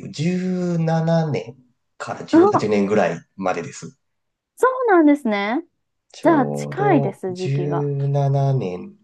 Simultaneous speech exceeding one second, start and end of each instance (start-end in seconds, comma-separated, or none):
6.2-7.9